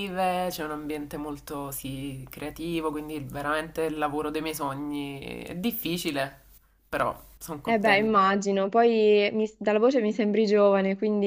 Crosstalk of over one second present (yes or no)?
no